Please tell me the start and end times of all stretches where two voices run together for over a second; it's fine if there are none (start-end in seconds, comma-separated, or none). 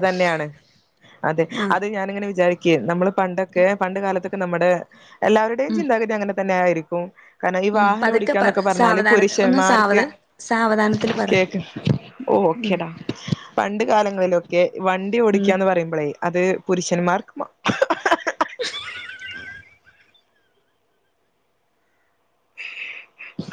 7.8-10.0